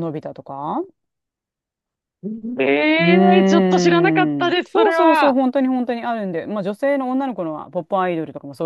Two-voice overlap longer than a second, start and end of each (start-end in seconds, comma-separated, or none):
3.0-5.4